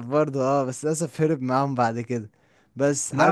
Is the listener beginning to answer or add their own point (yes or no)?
yes